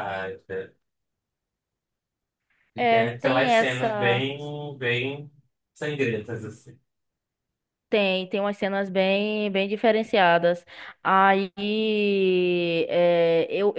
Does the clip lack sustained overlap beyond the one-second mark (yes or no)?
no